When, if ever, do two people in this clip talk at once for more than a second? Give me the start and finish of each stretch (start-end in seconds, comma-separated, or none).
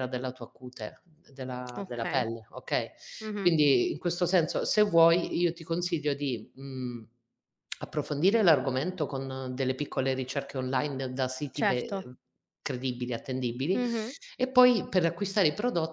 none